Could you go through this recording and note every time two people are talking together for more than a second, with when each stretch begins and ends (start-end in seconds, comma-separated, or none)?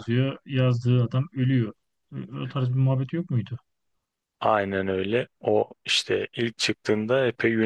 none